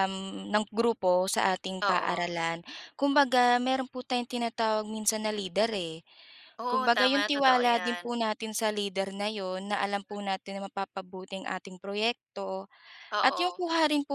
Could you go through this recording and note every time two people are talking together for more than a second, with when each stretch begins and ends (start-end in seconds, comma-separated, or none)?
6.7-8.0